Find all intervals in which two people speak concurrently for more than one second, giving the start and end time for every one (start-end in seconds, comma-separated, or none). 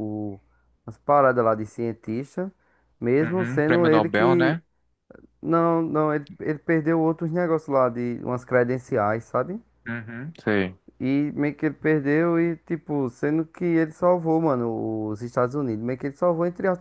3.2-4.6